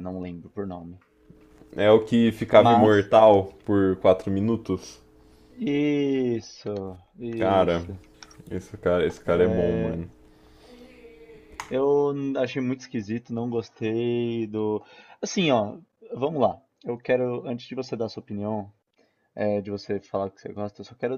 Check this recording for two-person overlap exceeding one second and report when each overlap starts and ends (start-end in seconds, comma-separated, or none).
none